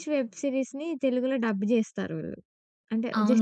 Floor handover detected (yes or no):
yes